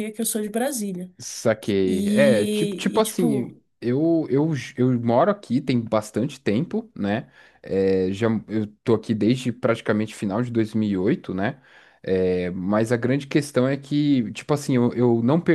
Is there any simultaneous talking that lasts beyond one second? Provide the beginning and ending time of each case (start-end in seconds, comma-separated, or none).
1.8-3.5